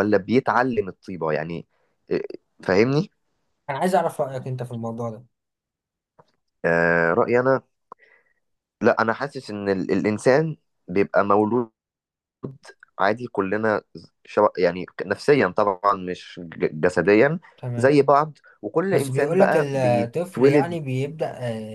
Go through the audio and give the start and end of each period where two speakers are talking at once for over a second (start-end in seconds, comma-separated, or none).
18.9-20.8